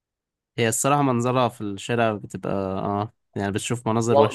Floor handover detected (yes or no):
yes